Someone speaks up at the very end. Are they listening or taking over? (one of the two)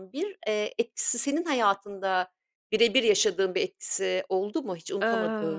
taking over